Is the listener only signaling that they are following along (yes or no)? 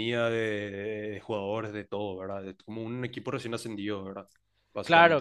no